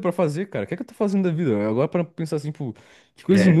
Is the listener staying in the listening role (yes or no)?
yes